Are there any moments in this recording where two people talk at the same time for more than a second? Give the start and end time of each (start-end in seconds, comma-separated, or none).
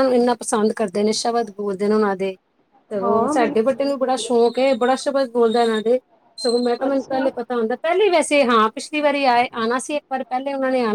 3.0-4.3